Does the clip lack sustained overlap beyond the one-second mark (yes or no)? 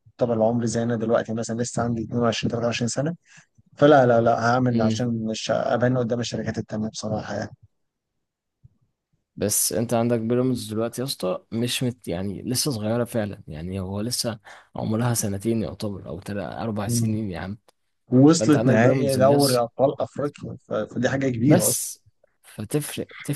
no